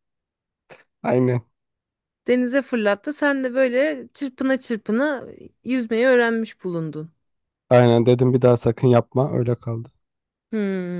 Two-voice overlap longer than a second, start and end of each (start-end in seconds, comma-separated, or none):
none